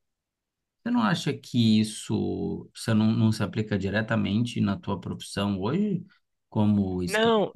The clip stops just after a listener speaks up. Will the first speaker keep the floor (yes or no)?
yes